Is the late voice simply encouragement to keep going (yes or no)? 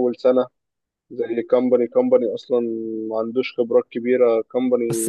no